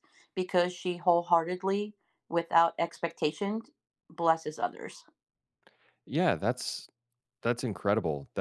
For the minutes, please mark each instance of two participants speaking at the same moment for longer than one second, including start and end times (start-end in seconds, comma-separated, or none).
none